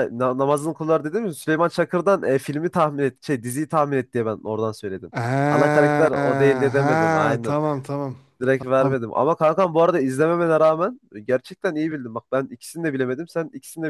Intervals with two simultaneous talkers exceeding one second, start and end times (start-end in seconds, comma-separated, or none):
5.5-7.6